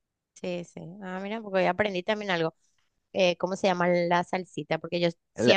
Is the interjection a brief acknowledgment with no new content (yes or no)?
yes